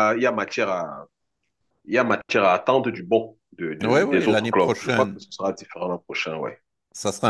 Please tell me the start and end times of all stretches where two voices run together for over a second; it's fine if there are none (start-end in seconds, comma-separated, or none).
3.8-5.2